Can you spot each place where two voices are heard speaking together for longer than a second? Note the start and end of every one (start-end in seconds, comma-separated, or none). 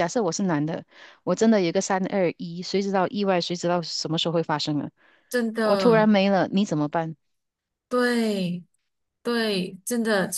none